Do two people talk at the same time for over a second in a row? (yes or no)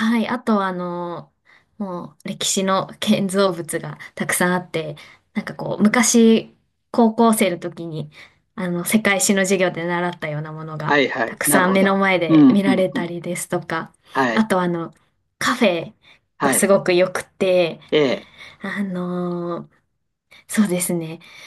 yes